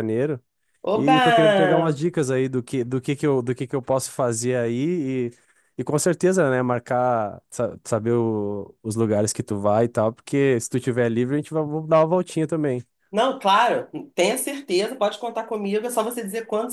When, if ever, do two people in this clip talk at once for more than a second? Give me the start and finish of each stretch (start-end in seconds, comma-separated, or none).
none